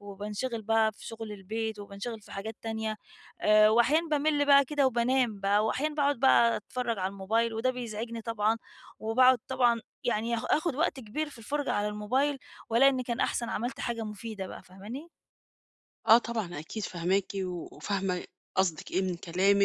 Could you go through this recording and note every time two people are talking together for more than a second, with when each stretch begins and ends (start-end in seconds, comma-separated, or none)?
none